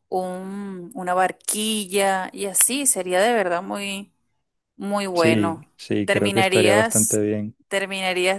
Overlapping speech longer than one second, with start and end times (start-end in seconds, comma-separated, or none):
5.2-7.2